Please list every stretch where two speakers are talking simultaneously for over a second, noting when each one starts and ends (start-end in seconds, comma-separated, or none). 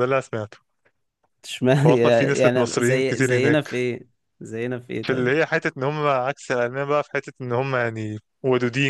1.8-3.8